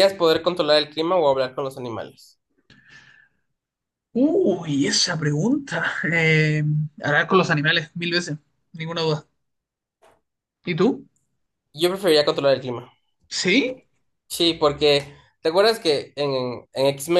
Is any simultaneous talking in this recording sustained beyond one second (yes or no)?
no